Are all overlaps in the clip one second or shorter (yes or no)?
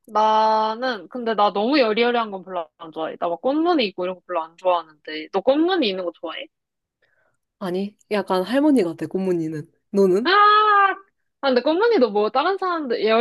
yes